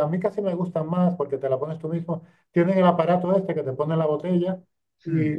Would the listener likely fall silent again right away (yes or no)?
yes